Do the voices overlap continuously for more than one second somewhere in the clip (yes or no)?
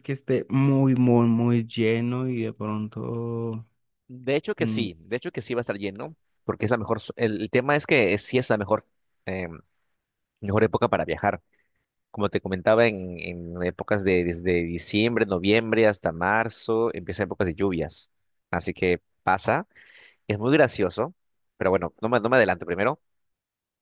no